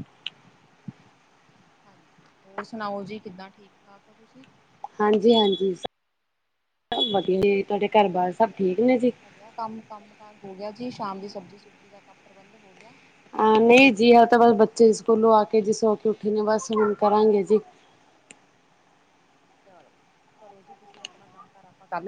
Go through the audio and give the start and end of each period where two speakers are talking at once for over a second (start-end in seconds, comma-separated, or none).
none